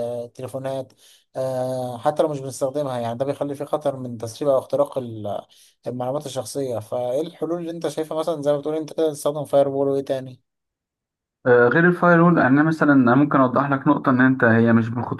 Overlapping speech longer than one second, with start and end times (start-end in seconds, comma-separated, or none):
none